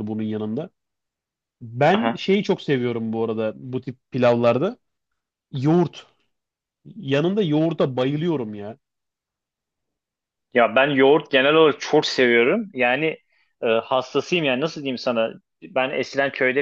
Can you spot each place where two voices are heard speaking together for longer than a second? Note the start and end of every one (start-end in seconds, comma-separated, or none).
none